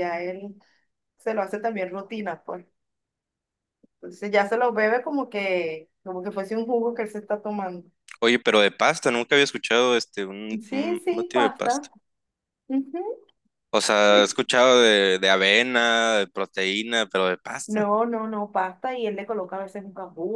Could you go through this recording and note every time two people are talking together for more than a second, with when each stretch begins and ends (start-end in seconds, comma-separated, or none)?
10.6-11.9